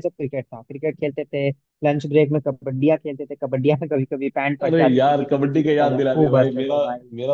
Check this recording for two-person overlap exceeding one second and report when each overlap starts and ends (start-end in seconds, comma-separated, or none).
4.6-6.8